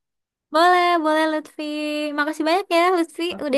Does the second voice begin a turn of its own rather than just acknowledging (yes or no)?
yes